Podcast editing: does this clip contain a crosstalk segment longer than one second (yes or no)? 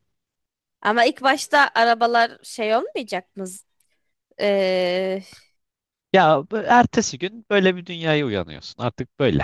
no